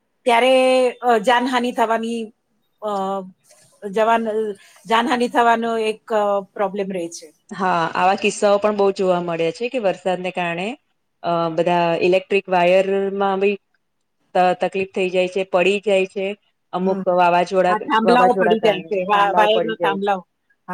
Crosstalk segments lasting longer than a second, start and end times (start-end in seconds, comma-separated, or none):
17.7-20.1